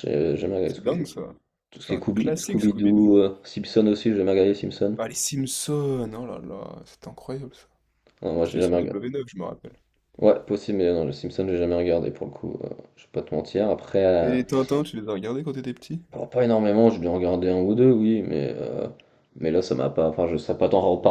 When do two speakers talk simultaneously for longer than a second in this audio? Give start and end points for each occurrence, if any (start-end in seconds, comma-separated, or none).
1.8-3.1